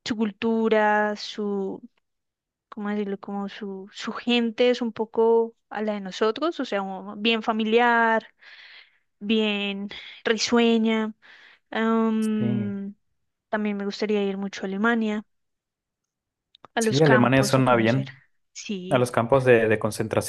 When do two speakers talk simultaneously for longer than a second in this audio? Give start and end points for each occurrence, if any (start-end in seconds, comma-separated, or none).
16.8-18.1